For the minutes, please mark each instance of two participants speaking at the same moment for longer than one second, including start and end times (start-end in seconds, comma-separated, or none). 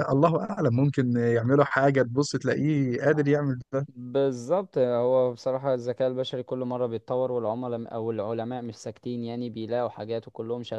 none